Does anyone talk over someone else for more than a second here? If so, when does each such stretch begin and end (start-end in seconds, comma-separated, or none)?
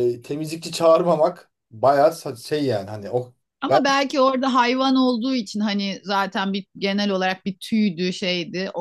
none